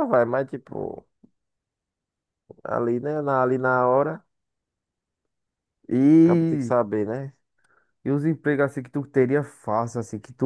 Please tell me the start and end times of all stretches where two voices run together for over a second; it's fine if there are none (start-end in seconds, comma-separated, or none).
none